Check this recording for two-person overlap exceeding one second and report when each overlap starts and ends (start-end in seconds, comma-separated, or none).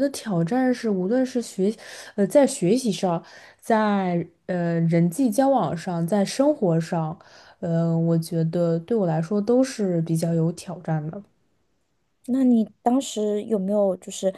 none